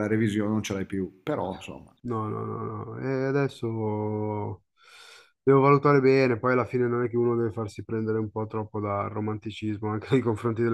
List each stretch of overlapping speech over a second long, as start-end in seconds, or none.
none